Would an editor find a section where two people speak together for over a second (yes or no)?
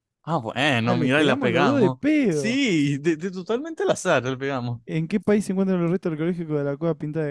yes